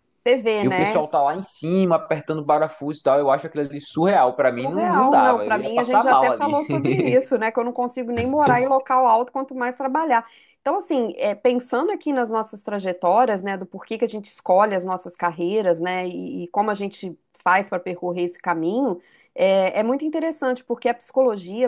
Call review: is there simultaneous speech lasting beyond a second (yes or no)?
yes